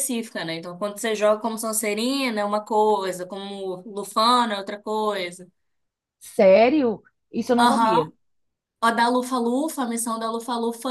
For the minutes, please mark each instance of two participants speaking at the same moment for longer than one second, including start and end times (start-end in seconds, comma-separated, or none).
none